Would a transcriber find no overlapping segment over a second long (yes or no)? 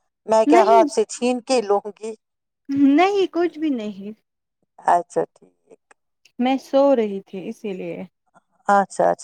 yes